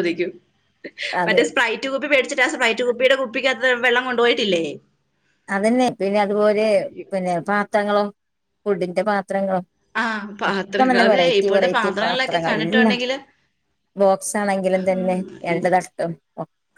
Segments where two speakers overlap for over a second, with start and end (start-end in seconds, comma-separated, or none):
10.5-13.0